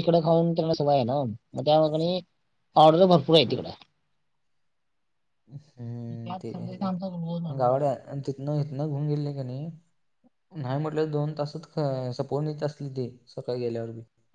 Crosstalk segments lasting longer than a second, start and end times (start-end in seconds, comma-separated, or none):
none